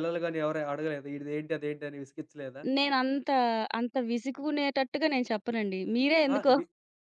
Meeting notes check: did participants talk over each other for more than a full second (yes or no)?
no